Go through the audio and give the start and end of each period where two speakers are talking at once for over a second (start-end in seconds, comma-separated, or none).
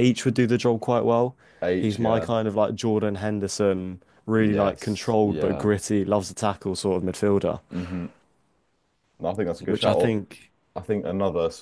4.4-5.7